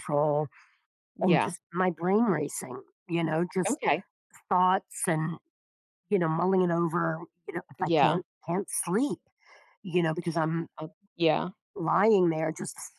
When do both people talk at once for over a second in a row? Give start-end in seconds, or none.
none